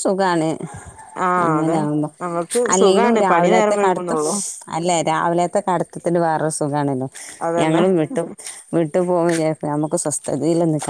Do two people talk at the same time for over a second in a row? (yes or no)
yes